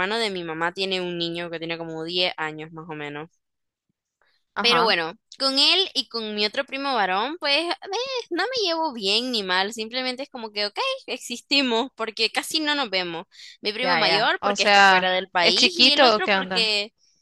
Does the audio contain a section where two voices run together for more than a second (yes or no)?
yes